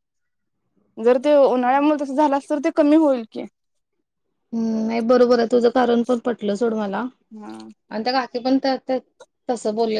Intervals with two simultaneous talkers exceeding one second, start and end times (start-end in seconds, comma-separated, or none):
none